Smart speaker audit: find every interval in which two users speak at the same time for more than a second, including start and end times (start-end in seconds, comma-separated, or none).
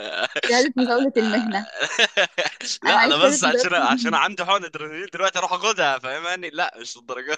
2.9-4.2